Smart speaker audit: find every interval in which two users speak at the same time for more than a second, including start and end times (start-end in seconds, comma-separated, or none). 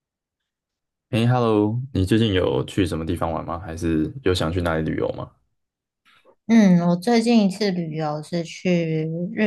none